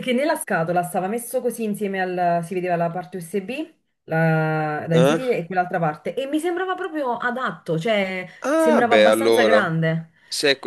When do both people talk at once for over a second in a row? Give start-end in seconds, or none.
8.4-9.8